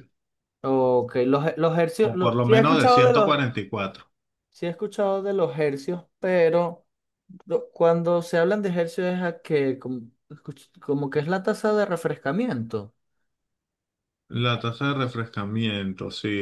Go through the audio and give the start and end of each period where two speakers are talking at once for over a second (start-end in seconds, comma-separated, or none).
2.0-3.4